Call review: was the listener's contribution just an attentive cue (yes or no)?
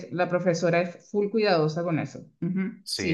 no